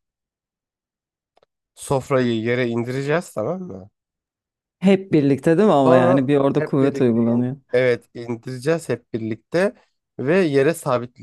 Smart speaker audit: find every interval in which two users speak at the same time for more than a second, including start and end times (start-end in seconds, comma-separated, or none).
5.9-7.6